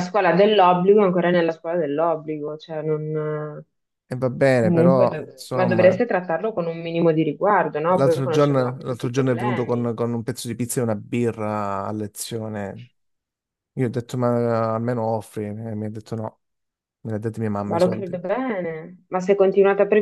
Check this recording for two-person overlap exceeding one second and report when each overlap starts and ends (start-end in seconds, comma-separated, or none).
4.5-6.0, 7.9-9.9